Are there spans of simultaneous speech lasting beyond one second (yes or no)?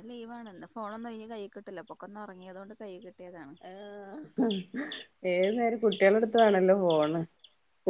no